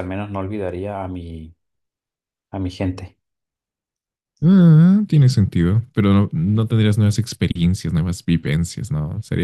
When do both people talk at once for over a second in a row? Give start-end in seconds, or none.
none